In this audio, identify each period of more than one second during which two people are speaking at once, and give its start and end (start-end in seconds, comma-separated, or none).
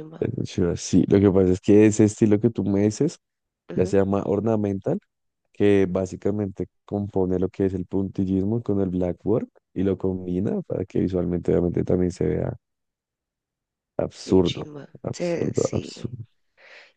14.2-16.1